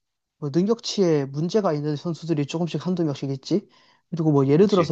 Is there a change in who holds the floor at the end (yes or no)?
no